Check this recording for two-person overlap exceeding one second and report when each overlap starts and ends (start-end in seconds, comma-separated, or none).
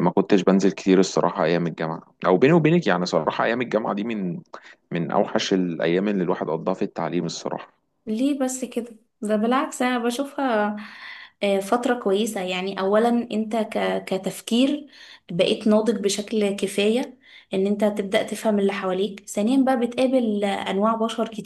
none